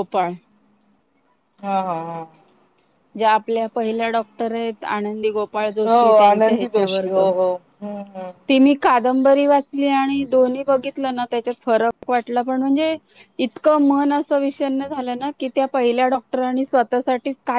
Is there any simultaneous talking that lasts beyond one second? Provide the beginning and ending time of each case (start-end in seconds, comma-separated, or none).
5.9-7.3